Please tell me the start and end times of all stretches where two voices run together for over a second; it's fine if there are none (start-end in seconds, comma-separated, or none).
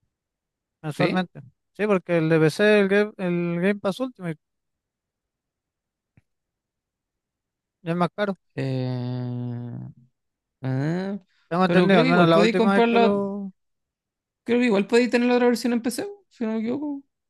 11.6-13.2